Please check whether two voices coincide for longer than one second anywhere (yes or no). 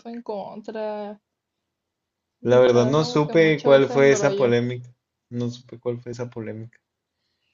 yes